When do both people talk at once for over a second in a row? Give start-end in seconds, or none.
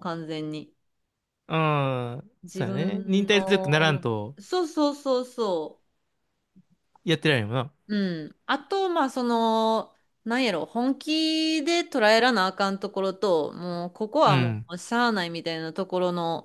2.5-4.3